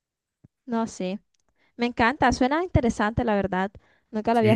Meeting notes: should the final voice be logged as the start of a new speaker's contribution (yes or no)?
yes